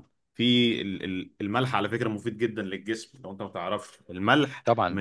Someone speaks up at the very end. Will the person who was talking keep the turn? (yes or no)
yes